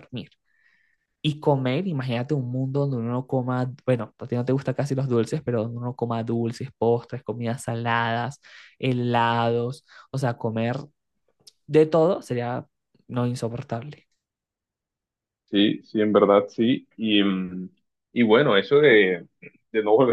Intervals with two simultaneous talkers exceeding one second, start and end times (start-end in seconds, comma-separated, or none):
none